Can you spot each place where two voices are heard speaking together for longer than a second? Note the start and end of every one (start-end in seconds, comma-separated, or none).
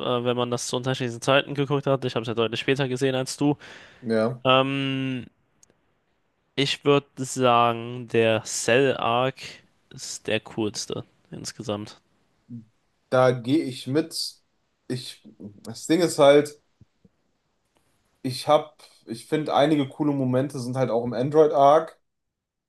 none